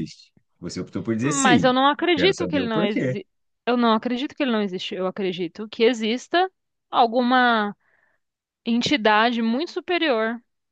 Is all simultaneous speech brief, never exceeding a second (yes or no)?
no